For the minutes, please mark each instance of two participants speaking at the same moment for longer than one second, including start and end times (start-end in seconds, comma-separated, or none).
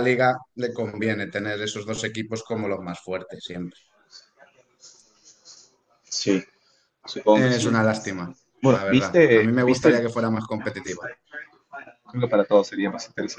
8.6-10.0